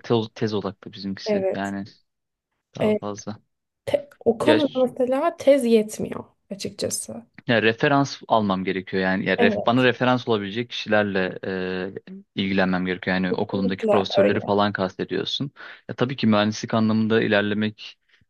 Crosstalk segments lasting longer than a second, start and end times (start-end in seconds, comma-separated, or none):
13.3-14.5